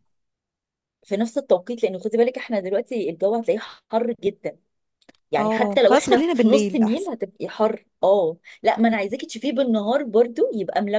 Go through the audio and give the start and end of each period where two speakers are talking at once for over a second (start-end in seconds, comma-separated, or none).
5.4-7.1